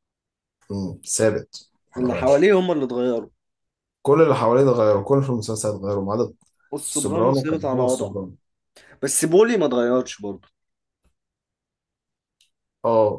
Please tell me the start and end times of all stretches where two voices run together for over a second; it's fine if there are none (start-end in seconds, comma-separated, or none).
6.9-8.2